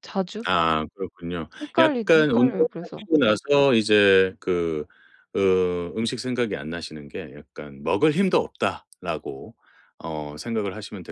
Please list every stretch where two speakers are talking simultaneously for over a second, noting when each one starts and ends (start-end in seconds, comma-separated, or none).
1.6-3.0